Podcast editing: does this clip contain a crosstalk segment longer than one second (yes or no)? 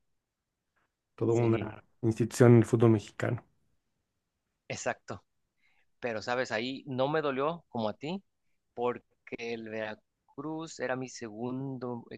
no